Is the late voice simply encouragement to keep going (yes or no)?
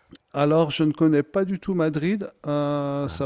yes